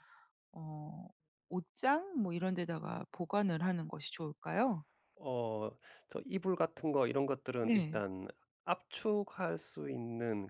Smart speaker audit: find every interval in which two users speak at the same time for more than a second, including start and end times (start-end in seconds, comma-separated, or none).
none